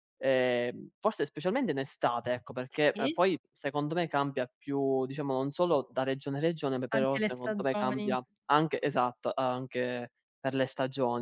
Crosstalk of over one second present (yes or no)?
yes